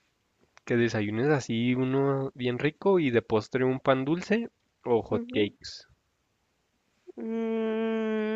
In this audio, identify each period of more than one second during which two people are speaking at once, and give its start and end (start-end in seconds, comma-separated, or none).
none